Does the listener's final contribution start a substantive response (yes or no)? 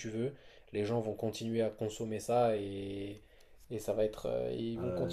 yes